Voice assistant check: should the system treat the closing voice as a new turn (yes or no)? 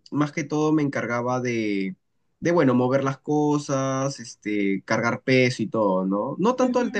yes